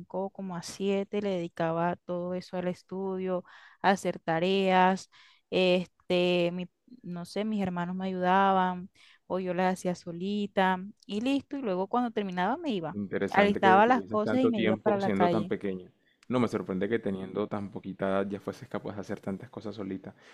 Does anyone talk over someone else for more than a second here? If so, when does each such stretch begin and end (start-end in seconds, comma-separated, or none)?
12.9-15.5